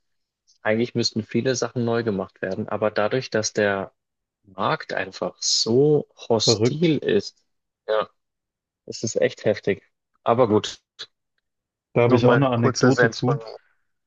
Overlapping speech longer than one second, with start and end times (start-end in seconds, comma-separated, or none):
12.0-13.4